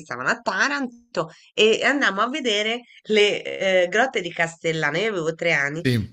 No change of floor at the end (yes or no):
yes